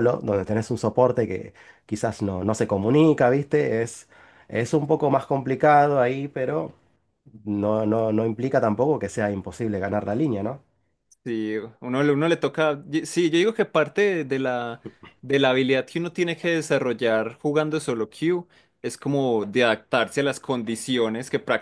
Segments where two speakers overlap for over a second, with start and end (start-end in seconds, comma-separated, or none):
none